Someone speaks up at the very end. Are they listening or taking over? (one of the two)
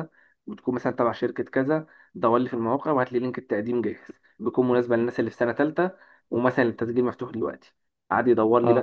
listening